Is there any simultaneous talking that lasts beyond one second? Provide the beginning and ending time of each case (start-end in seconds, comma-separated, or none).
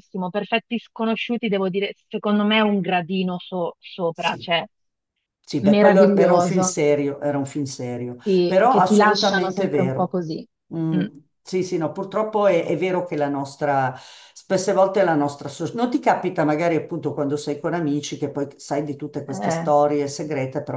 5.6-6.8, 8.2-10.2